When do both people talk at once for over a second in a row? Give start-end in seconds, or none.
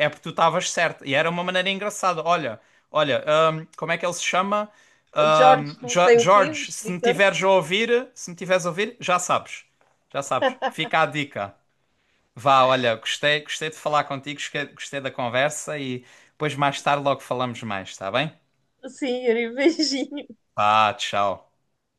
5.3-7.2